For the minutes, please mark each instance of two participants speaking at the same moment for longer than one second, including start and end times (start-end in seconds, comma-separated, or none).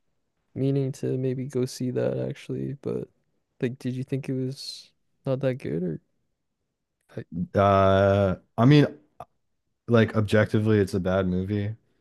none